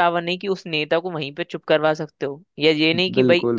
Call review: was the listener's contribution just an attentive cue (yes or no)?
yes